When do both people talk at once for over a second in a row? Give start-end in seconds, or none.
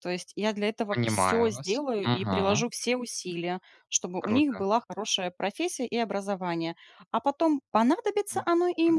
0.9-2.6